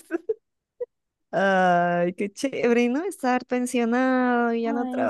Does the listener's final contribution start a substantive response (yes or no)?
no